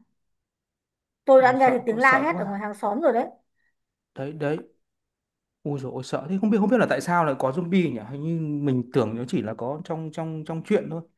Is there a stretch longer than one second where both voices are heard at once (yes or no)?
yes